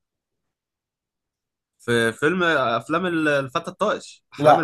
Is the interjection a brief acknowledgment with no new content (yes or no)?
no